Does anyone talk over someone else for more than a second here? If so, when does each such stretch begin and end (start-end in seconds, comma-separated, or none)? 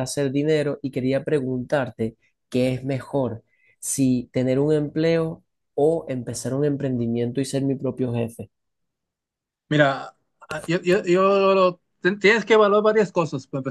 none